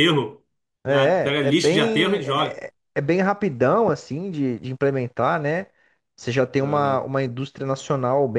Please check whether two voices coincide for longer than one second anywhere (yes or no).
yes